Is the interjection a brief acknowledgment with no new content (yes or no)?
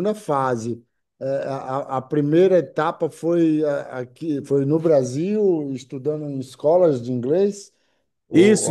no